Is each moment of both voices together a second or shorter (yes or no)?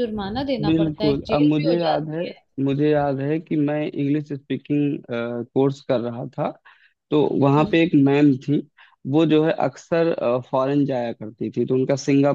no